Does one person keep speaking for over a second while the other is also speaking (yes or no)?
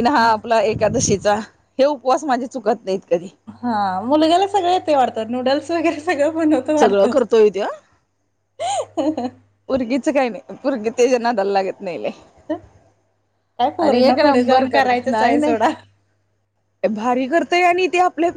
yes